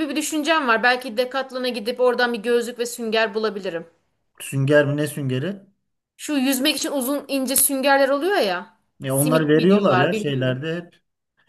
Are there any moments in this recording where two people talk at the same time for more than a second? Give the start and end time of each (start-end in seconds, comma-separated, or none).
9.0-10.6